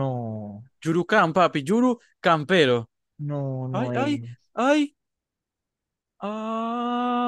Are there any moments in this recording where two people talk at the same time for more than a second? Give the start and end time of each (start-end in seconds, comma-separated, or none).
none